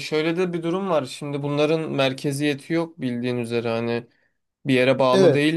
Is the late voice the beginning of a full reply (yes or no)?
no